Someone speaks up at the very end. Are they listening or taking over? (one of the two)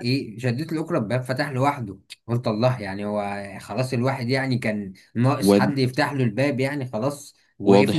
taking over